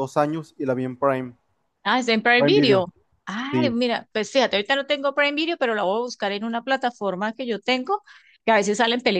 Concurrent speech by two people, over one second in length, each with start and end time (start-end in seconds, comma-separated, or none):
none